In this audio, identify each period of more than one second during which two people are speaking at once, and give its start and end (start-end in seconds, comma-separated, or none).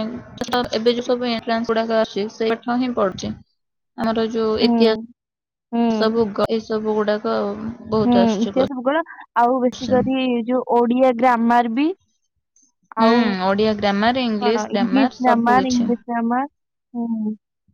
14.5-15.8